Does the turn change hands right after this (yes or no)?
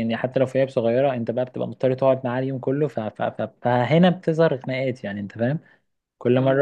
no